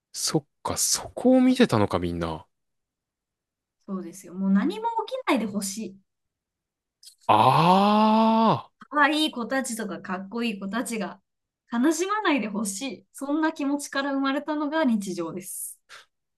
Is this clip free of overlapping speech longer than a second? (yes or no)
yes